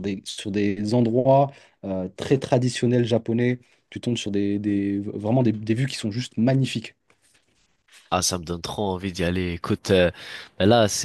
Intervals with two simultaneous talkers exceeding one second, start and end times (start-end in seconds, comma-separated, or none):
none